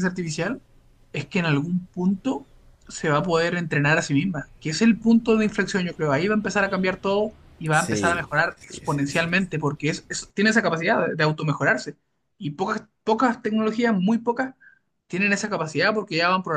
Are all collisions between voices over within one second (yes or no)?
no